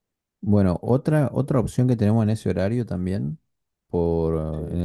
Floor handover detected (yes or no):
no